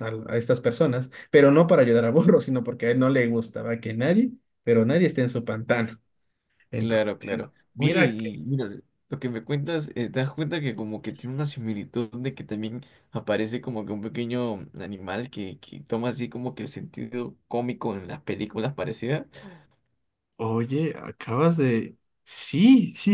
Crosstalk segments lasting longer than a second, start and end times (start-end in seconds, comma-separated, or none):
6.8-8.3